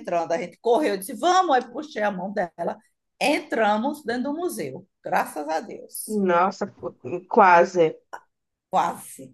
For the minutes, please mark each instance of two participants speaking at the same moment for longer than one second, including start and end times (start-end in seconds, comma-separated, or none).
none